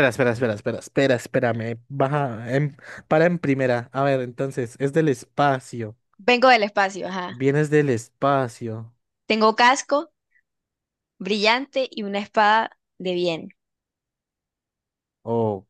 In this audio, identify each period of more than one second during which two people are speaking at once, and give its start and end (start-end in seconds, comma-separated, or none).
none